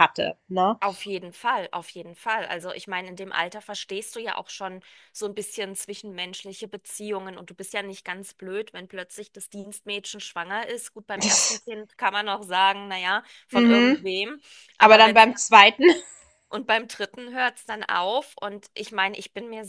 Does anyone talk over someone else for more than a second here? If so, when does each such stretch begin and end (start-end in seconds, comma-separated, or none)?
none